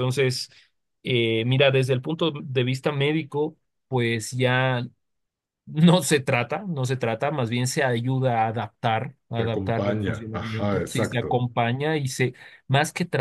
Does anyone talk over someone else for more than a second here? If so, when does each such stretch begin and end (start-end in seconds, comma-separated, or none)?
9.4-11.4